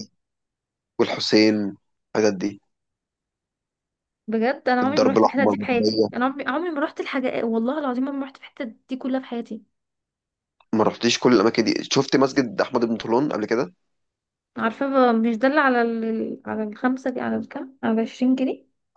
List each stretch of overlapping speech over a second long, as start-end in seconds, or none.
4.8-6.1